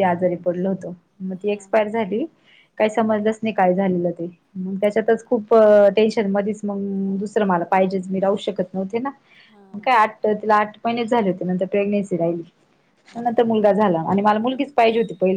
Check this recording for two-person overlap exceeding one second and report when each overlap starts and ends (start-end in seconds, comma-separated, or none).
none